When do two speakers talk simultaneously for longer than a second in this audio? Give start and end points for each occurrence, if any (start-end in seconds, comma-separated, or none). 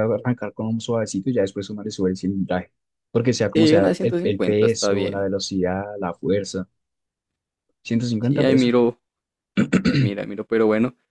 3.5-5.3